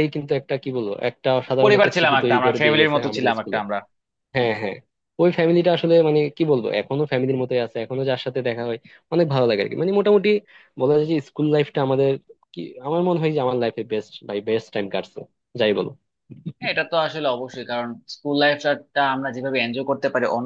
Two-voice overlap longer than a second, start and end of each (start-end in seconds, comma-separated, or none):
1.6-3.6